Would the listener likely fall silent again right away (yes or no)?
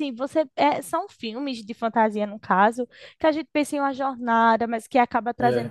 yes